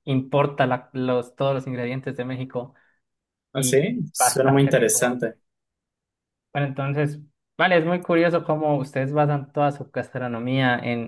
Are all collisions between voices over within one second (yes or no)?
no